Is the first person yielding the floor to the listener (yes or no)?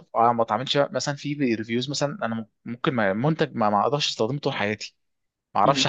no